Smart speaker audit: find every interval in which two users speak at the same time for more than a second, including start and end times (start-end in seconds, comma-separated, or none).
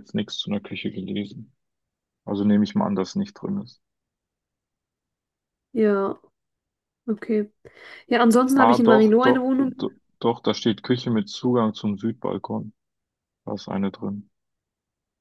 8.5-9.9